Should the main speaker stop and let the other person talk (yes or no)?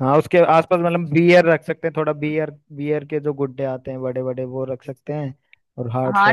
yes